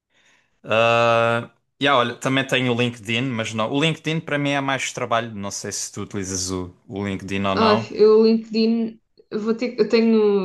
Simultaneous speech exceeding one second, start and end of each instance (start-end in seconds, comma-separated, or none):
none